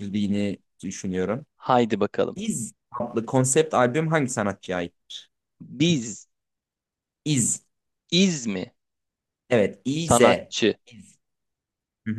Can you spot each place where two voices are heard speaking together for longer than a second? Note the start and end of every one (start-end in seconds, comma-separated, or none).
none